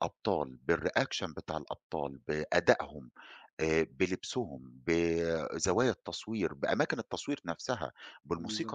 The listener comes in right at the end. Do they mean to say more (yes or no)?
yes